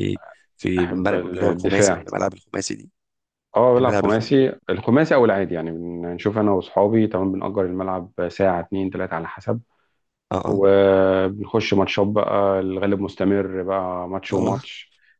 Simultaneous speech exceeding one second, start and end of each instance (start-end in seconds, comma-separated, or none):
0.8-2.0